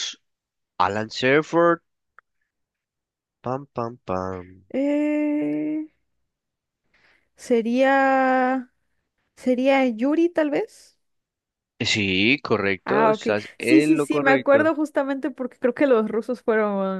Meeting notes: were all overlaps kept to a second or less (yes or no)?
no